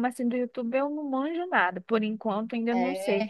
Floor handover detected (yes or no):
no